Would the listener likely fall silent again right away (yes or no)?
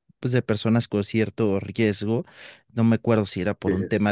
yes